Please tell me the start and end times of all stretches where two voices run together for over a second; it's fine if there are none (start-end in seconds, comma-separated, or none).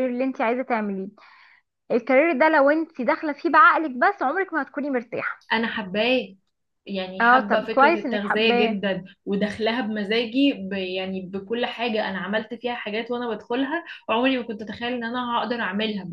7.2-8.8